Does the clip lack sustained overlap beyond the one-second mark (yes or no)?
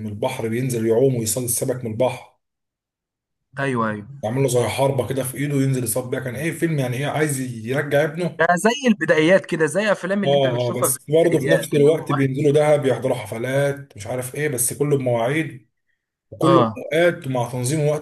no